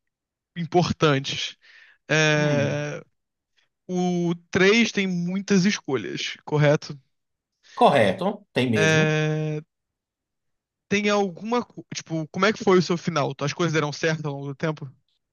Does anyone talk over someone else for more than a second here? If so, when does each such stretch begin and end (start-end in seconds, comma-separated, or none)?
none